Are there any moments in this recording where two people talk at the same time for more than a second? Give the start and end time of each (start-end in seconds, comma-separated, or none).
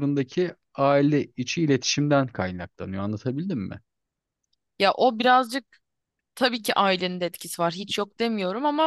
none